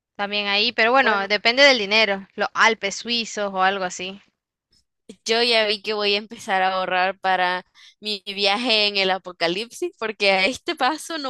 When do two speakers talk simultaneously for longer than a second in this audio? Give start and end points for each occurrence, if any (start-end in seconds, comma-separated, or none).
none